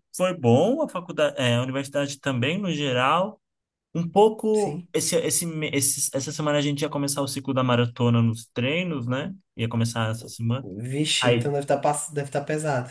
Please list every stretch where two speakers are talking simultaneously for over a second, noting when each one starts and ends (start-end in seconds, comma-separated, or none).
none